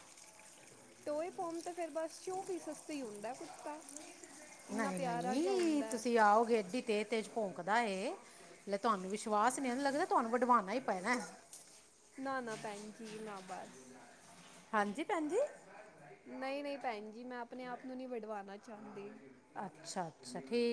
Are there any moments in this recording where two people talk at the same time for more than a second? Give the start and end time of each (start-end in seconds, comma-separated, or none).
4.7-6.0